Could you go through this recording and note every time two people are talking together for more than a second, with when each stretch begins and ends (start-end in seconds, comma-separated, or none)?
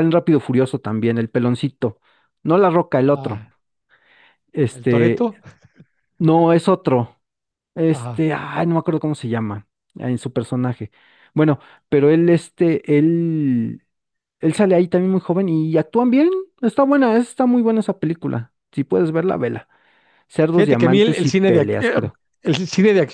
20.5-22.0